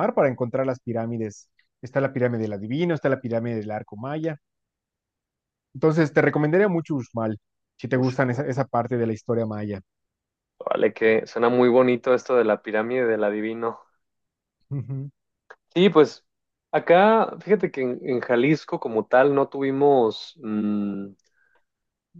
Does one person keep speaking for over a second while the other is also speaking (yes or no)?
no